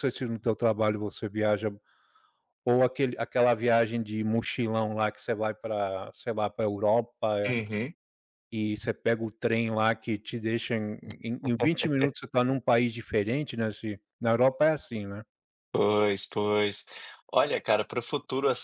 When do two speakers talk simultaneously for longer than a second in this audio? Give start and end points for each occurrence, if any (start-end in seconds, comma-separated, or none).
none